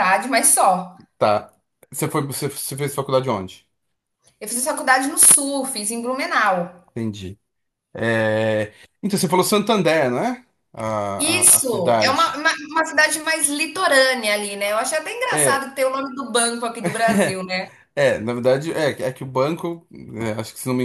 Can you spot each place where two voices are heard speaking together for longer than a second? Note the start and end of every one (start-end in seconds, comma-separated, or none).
11.2-12.4